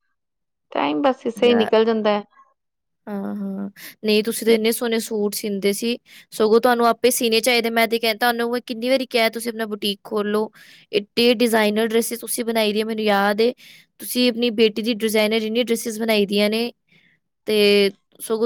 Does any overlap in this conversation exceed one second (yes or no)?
no